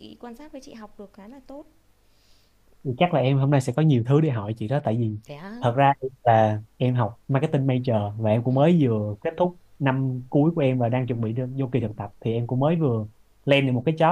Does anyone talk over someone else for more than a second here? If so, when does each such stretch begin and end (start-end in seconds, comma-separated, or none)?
none